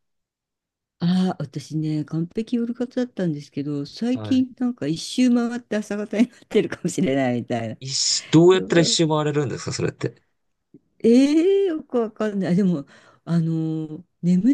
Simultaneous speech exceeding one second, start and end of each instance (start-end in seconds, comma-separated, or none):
none